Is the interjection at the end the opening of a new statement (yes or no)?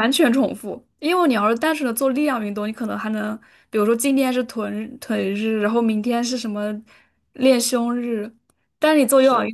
no